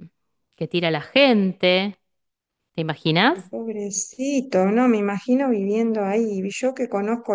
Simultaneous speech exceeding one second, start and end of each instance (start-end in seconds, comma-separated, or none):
none